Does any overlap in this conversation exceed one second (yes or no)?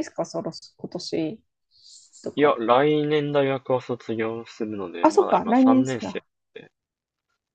yes